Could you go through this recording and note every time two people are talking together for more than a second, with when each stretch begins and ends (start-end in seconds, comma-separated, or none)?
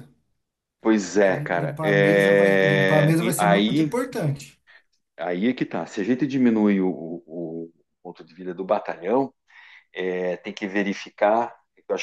1.1-3.9